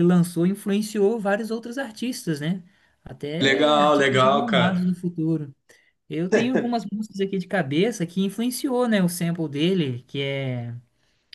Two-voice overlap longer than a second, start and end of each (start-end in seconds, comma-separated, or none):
3.4-5.0